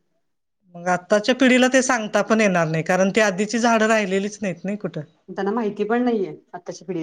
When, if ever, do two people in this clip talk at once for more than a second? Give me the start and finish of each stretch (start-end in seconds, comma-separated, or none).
none